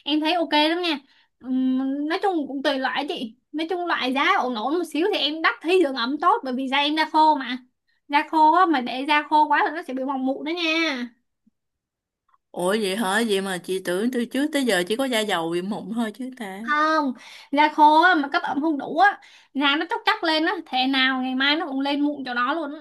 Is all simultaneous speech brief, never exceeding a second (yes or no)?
yes